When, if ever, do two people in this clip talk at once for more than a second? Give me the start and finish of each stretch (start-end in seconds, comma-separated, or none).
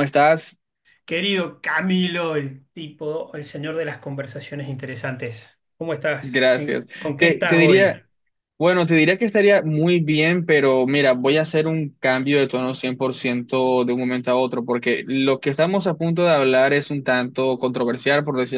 6.2-8.0